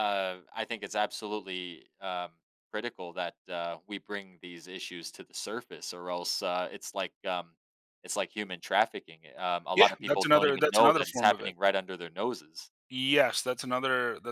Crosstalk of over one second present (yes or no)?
yes